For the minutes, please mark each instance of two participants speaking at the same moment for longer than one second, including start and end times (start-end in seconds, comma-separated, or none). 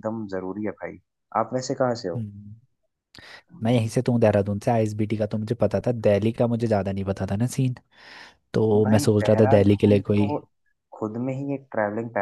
8.7-10.3